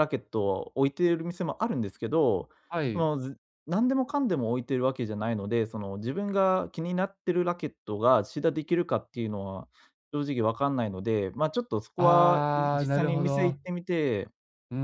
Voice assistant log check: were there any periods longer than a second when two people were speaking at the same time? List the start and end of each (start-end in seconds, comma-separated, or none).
12.0-13.6